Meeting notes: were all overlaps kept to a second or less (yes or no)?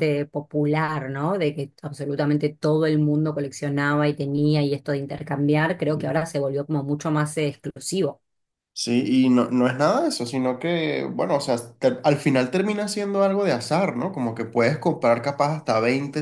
yes